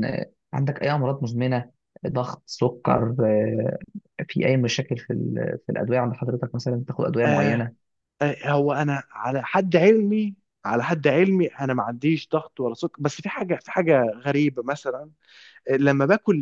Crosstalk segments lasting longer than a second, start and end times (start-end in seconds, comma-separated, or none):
none